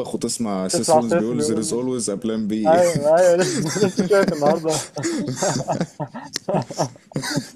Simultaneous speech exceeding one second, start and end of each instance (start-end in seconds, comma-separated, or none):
0.7-1.9